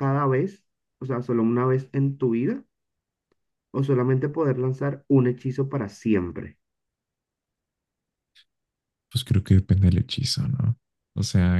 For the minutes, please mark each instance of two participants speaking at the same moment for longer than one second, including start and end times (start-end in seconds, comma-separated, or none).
none